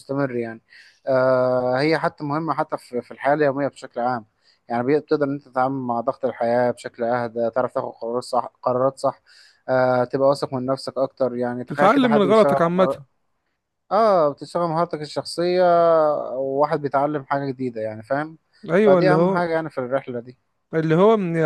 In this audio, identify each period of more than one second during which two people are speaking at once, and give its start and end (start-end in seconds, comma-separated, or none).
11.7-13.0